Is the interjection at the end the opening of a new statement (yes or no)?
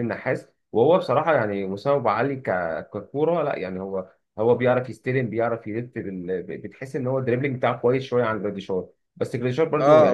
yes